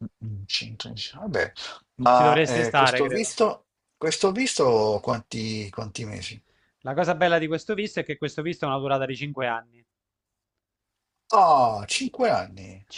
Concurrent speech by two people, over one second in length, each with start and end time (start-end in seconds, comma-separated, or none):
2.1-3.4